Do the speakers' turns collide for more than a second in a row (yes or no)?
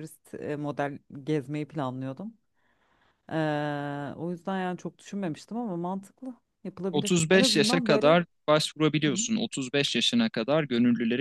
yes